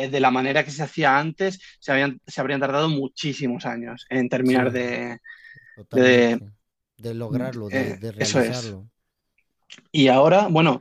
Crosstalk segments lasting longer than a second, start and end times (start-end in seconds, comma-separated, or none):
7.3-8.8